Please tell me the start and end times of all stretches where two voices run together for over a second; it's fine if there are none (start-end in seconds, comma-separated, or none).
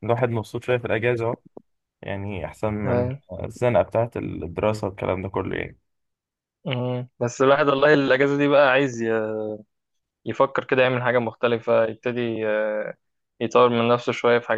none